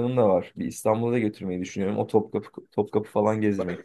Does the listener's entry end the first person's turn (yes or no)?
yes